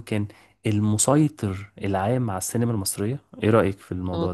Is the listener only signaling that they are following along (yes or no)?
no